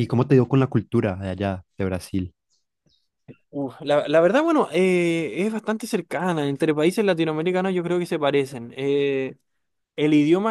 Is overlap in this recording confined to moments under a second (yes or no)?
yes